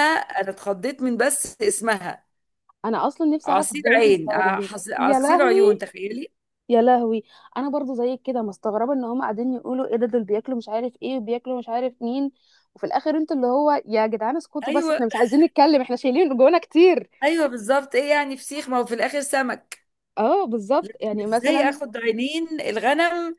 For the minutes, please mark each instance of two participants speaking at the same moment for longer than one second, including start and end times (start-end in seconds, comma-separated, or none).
3.4-5.9